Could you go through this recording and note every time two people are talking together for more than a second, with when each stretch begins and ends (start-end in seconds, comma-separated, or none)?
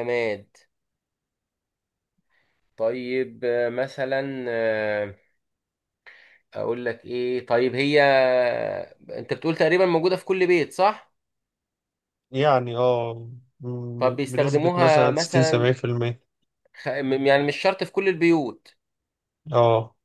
14.0-15.7